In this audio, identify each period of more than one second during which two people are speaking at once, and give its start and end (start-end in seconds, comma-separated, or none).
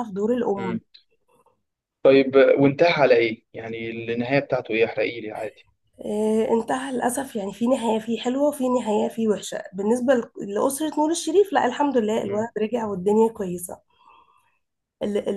none